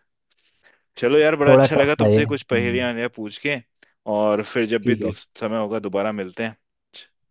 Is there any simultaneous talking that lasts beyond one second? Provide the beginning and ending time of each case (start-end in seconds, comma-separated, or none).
1.5-2.9